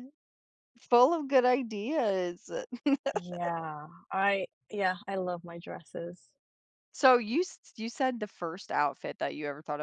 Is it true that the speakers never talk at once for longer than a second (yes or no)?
yes